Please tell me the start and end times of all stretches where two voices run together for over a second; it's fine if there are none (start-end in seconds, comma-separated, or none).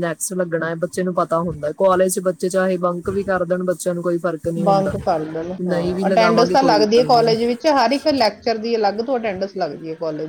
5.6-7.3